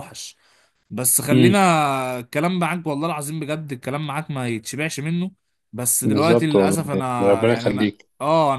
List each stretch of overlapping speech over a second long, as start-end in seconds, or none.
6.0-8.1